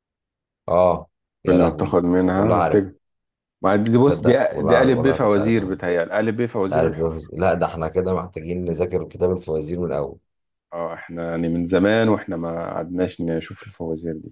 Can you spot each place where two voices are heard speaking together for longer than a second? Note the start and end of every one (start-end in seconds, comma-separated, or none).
1.5-2.9, 4.0-5.7